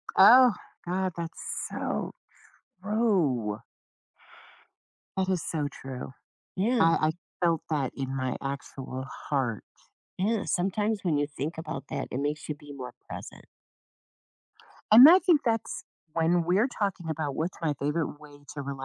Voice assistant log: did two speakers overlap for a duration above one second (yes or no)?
no